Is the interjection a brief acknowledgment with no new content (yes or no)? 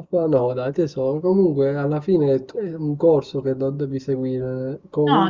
no